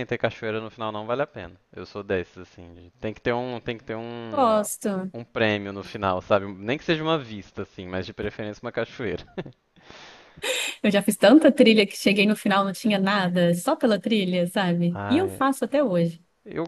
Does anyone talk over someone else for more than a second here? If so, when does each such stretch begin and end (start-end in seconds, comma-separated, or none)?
none